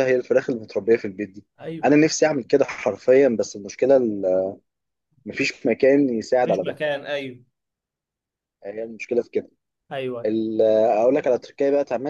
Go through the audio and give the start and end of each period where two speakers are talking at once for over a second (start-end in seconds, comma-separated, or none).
none